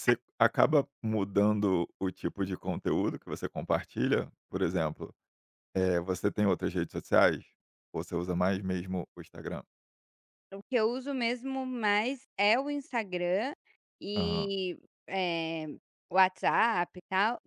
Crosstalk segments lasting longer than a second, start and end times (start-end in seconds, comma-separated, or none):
none